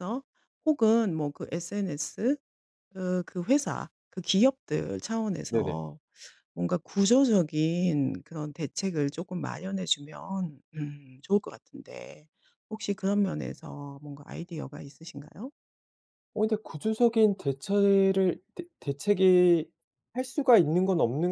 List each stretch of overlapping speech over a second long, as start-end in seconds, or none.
none